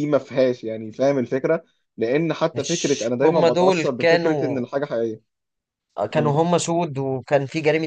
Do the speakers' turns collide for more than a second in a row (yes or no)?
yes